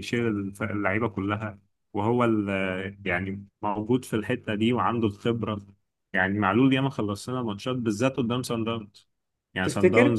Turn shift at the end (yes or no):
no